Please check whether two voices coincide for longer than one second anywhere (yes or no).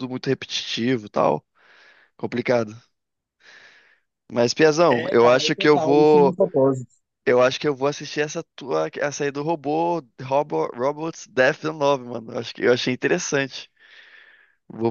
yes